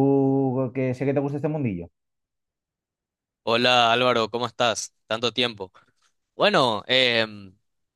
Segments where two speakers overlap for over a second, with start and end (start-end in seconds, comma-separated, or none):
none